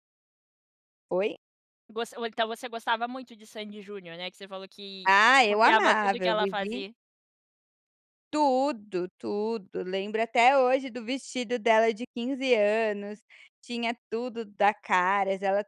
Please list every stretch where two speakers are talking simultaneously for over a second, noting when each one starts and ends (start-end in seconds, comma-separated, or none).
5.0-6.8